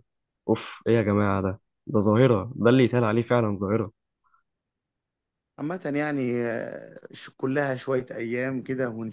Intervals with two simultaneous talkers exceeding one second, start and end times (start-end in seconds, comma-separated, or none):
none